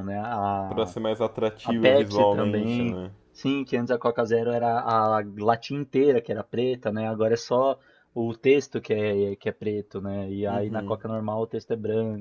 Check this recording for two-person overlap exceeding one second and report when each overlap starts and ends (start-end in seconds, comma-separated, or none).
1.6-3.1